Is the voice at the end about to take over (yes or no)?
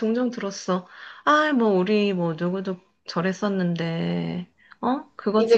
yes